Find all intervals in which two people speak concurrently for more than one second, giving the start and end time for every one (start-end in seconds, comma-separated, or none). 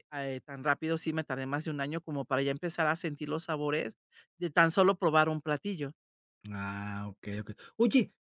none